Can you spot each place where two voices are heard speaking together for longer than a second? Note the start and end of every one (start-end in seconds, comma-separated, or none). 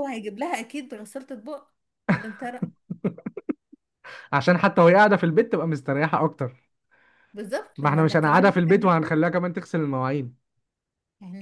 7.8-9.2